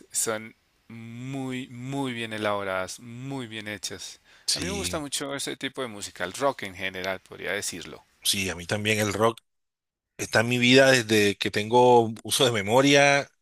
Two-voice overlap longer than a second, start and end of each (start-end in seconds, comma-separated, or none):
none